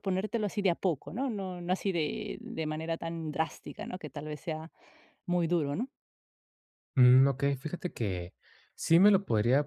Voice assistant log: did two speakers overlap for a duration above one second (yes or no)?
no